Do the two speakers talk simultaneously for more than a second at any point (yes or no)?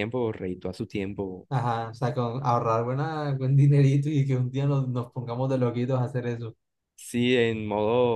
no